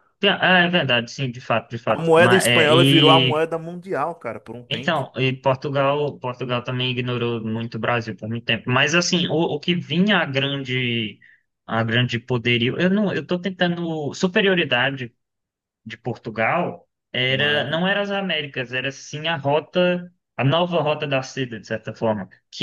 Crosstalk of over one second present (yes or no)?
yes